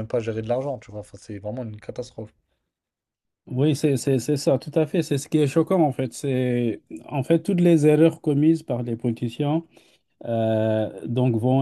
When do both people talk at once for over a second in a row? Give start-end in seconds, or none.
none